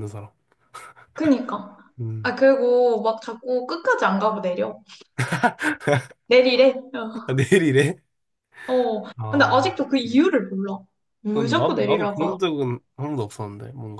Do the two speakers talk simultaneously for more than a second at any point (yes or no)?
yes